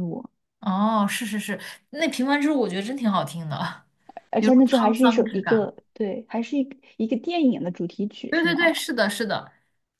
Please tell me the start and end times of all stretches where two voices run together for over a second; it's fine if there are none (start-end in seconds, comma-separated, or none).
4.4-5.7